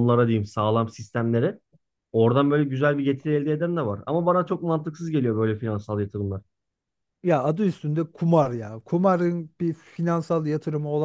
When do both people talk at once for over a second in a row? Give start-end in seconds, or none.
none